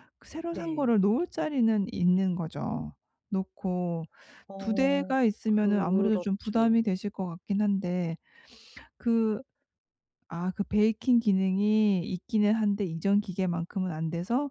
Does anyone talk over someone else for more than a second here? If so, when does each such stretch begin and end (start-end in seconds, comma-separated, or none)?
4.6-6.8